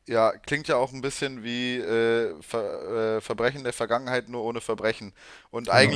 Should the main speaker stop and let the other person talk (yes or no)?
no